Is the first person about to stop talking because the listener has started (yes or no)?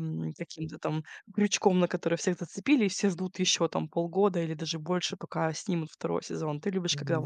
yes